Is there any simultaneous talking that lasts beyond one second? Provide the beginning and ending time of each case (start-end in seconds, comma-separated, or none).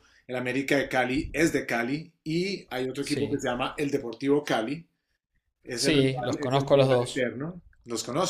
5.8-7.3